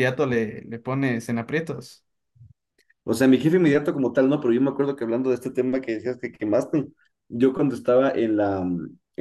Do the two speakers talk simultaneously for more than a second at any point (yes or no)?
no